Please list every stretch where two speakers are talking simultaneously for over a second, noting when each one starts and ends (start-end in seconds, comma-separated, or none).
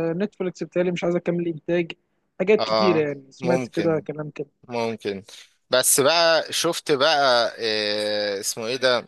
2.6-4.0